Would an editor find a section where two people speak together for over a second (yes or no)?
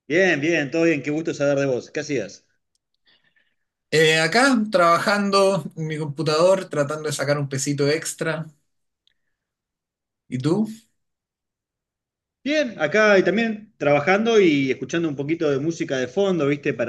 no